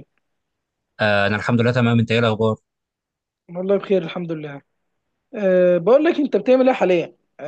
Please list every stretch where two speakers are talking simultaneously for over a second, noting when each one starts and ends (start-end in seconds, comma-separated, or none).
none